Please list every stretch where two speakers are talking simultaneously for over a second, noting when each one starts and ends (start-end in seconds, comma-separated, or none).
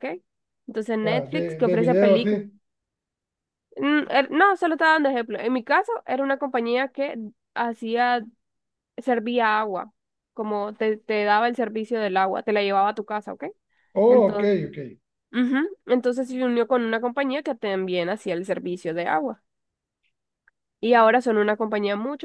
1.0-2.4